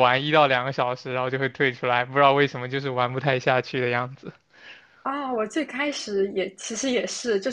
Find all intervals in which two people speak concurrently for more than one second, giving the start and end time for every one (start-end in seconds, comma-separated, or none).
none